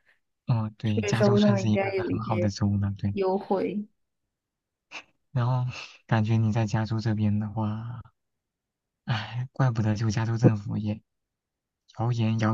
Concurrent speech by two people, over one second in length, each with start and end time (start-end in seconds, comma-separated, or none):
1.0-2.5